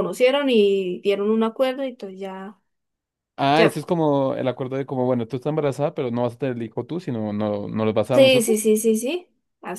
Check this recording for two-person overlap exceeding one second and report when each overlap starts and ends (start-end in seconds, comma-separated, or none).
none